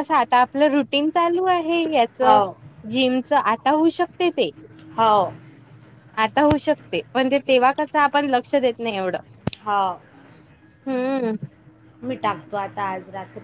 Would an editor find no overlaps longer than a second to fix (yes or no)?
yes